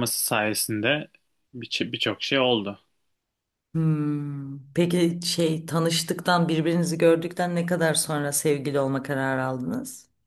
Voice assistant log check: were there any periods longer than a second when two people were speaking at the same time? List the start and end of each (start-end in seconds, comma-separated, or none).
none